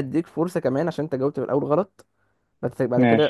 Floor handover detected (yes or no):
no